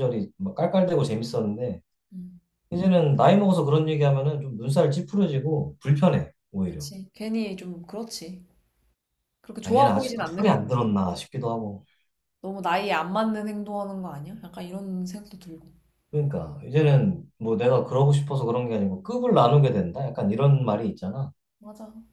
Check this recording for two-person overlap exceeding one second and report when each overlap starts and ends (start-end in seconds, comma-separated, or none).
9.6-10.9